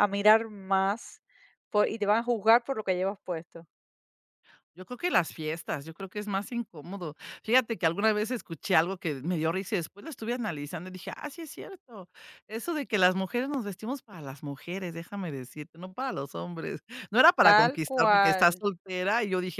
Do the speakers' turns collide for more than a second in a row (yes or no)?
yes